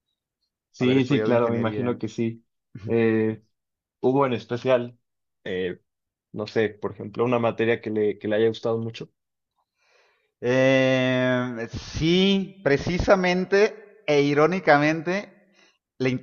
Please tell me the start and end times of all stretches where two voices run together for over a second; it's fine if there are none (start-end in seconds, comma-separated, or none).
0.8-2.0